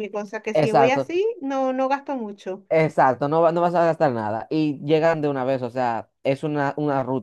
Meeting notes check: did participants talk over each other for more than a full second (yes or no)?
no